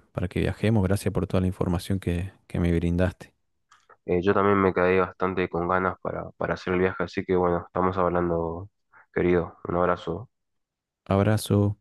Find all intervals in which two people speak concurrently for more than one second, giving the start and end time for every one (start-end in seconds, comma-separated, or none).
none